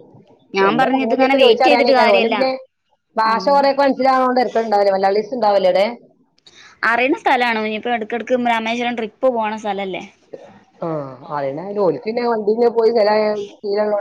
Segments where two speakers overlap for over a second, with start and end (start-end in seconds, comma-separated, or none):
0.7-2.4